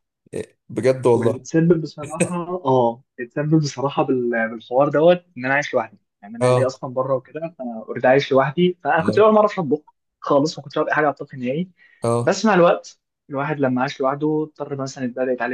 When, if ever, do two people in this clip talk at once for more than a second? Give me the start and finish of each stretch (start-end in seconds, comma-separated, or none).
none